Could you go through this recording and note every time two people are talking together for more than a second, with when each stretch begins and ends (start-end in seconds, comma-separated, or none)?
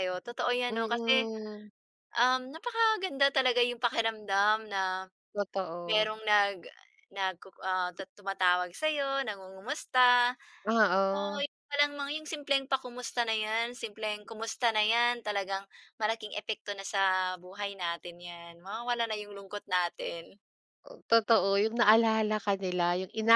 none